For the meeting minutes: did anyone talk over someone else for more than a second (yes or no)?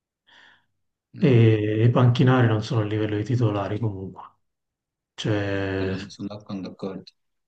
no